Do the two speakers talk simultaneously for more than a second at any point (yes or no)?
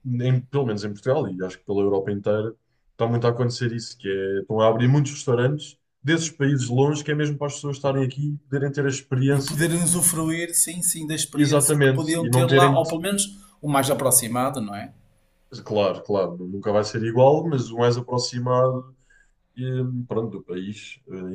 yes